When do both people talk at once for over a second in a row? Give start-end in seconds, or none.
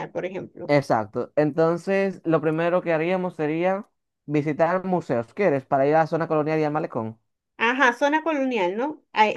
none